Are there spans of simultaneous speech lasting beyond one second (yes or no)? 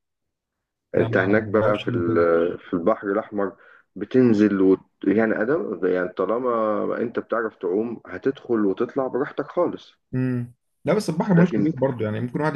yes